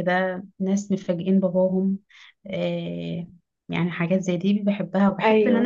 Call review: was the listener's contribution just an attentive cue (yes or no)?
yes